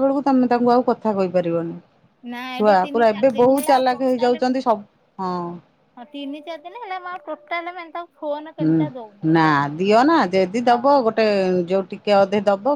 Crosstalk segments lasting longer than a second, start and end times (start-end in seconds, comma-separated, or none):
2.6-4.5